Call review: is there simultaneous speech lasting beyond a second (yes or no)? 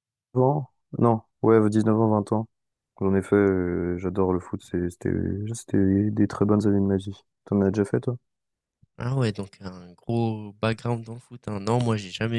no